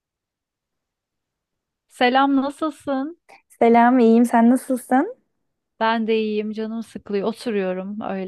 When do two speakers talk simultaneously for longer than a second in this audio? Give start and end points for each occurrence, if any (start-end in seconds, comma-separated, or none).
none